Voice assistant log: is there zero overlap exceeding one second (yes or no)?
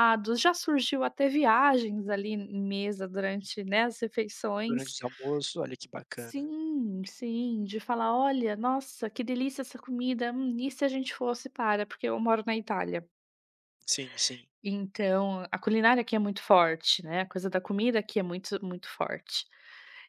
yes